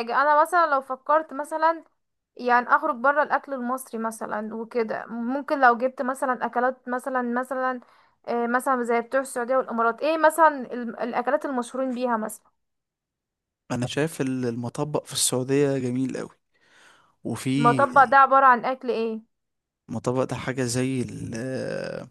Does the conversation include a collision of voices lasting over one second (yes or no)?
no